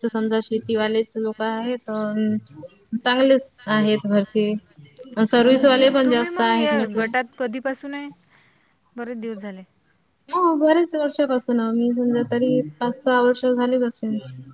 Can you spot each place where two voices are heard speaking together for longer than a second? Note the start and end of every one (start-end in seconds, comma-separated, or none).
5.4-7.1